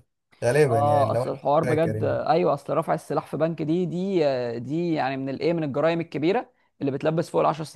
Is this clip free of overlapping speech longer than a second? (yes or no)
no